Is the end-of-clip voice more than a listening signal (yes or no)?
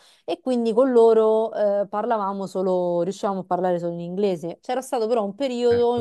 no